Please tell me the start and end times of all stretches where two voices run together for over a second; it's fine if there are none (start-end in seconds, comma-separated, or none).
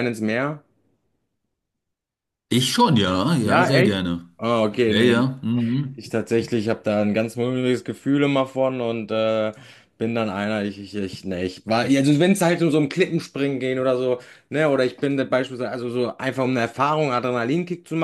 none